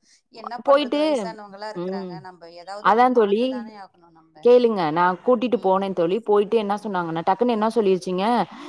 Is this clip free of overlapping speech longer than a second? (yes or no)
yes